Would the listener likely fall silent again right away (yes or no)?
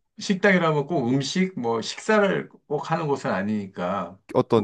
no